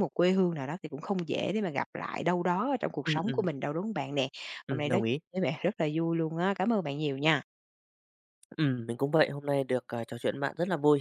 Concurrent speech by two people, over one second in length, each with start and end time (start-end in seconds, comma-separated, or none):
none